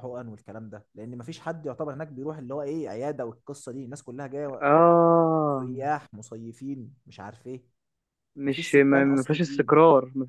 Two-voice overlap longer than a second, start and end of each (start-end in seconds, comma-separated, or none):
8.4-9.8